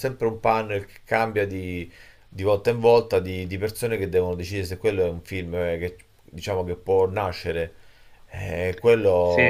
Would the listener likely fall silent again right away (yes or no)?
yes